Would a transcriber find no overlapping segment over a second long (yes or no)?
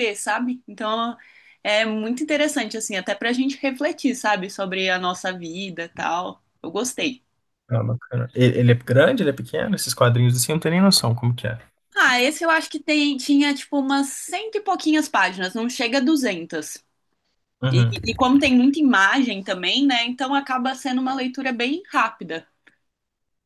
yes